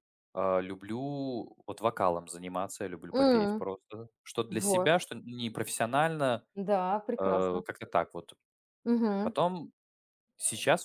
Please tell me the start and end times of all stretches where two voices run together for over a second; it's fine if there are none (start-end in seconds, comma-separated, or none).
none